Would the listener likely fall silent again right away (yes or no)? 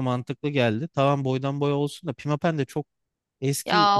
no